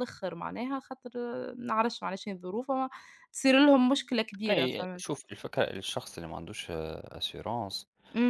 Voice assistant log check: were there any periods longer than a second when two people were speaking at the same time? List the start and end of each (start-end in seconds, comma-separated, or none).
none